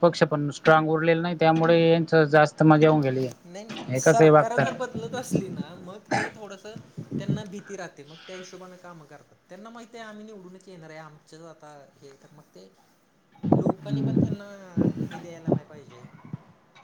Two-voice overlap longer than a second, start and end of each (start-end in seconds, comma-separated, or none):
none